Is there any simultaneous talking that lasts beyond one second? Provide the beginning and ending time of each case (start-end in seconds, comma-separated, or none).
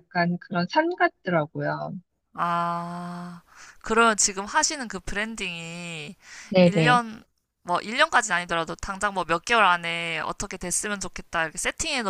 none